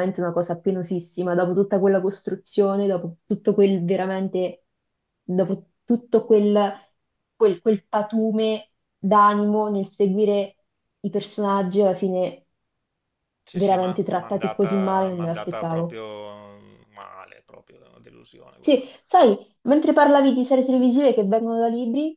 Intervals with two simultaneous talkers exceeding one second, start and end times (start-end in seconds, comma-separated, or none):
13.5-16.0